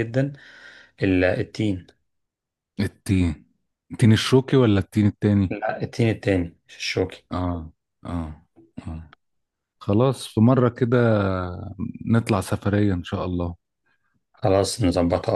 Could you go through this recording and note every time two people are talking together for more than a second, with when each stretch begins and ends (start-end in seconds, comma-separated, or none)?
none